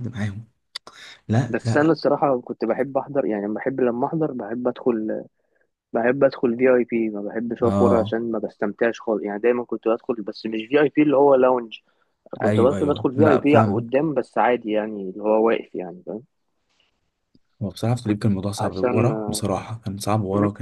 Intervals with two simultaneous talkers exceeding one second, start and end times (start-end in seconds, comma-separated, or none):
12.4-14.0